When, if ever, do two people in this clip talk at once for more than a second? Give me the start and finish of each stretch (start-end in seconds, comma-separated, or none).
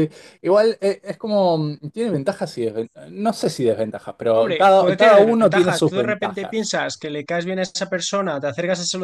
4.3-6.8